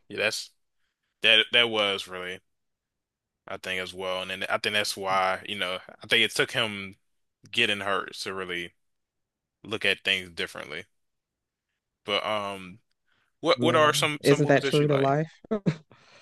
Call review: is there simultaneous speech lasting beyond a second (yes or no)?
yes